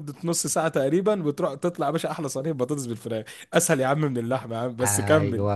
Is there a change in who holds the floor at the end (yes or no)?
yes